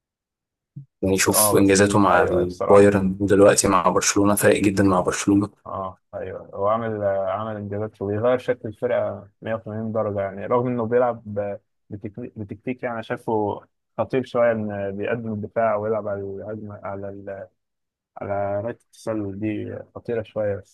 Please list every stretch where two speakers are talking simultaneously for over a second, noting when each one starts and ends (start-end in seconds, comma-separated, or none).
1.1-2.9